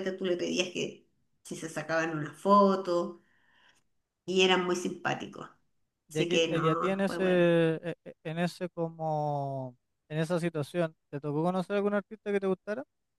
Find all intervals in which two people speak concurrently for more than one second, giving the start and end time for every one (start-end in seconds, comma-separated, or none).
6.1-7.5